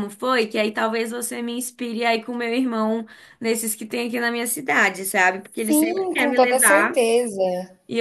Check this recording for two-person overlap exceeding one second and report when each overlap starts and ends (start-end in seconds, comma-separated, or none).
5.6-7.0